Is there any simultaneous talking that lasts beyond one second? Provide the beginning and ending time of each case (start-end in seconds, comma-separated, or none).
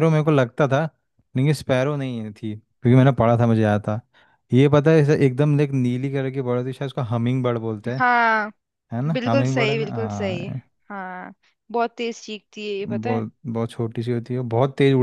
9.1-10.5